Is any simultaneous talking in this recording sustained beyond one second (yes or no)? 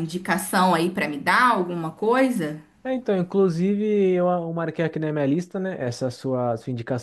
no